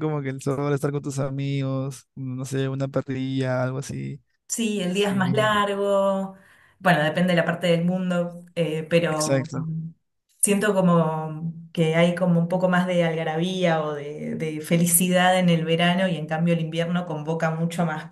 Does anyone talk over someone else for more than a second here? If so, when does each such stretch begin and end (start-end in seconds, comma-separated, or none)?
none